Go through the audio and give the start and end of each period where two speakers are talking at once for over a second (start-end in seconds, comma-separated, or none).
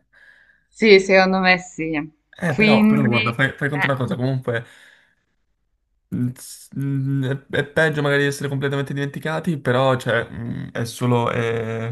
2.4-3.9